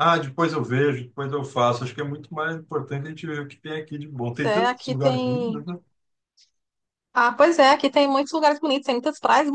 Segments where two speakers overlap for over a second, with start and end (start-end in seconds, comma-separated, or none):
4.2-5.6